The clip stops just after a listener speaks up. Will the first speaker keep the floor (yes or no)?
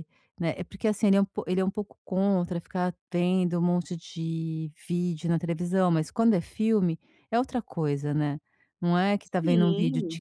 yes